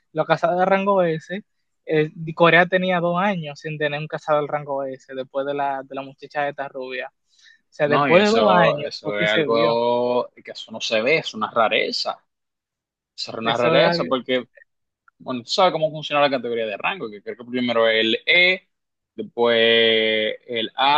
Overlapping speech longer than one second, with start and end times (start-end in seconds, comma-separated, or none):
7.8-9.8